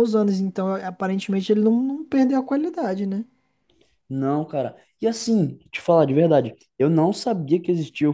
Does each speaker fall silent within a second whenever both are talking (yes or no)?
yes